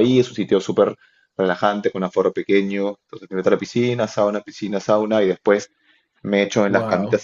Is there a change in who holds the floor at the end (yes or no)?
no